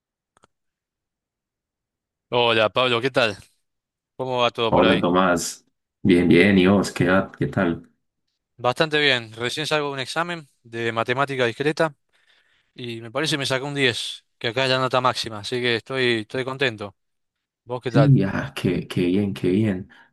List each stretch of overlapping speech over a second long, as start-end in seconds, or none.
none